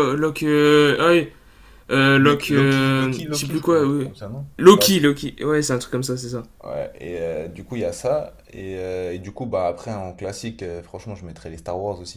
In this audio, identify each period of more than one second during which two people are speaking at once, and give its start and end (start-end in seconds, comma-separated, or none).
2.2-4.1